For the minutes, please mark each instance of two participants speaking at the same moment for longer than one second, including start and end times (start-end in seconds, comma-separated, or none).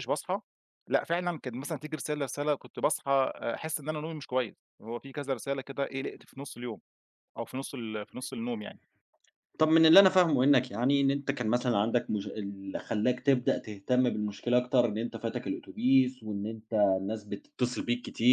none